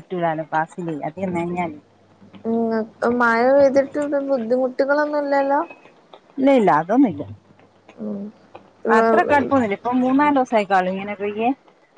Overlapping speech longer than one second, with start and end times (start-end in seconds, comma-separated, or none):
none